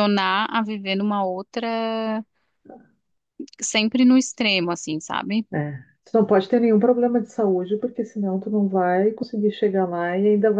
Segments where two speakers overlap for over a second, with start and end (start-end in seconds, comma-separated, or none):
none